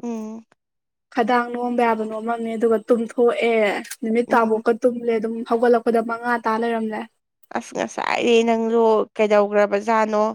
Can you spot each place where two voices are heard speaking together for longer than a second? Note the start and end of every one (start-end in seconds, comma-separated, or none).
none